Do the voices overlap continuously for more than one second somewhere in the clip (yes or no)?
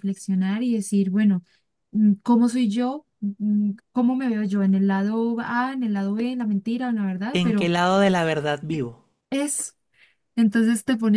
no